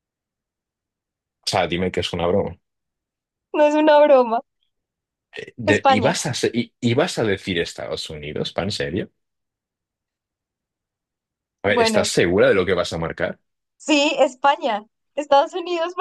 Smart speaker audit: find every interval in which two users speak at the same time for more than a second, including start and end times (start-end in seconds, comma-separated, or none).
none